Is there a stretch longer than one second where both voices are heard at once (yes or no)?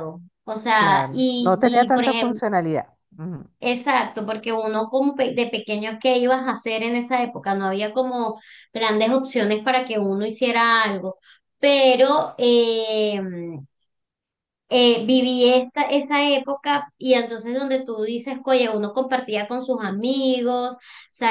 yes